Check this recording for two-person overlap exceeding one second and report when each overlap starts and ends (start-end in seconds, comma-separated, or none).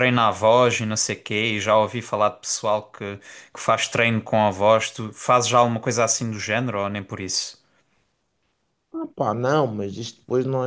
none